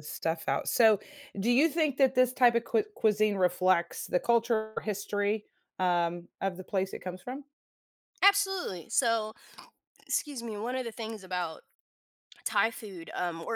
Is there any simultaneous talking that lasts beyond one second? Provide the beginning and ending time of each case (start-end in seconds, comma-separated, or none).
none